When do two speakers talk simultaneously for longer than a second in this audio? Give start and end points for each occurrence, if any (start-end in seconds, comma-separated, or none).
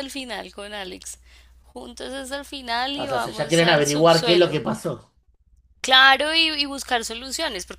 3.0-4.6